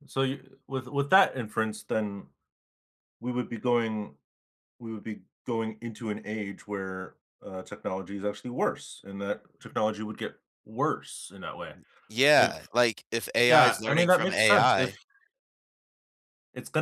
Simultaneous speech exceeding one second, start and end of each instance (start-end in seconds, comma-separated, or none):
13.4-14.9